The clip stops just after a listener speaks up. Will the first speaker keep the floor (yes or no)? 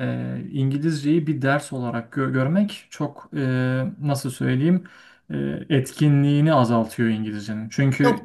yes